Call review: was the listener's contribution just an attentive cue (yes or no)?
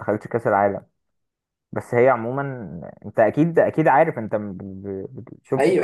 no